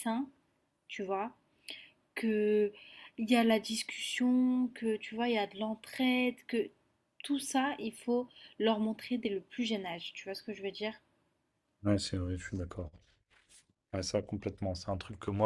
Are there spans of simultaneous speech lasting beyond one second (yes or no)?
no